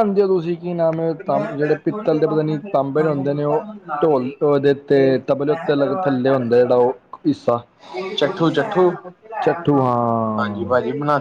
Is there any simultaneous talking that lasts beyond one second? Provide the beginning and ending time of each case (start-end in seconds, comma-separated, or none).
9.4-10.7